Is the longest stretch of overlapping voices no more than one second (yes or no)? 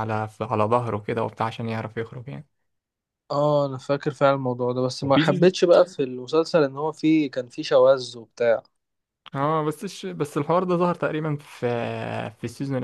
yes